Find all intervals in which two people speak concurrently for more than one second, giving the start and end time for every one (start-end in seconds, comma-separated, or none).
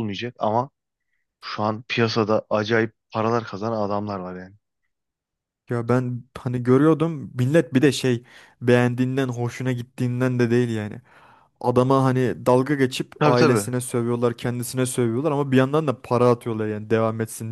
none